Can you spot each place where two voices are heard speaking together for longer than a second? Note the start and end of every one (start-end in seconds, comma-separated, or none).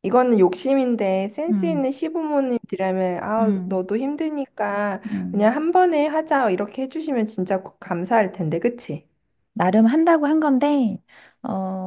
none